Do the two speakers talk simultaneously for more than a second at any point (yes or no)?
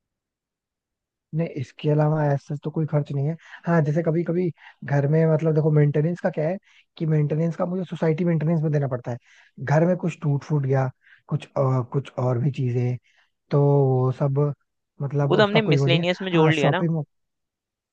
yes